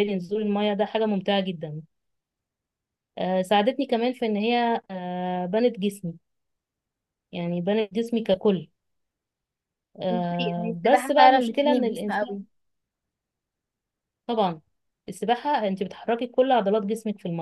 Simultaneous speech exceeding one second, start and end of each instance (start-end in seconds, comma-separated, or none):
10.1-12.4